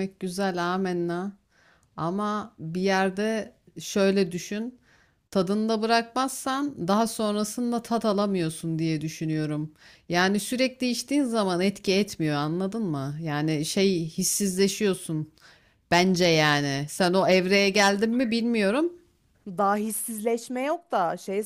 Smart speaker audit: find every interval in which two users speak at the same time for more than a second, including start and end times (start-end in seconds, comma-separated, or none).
none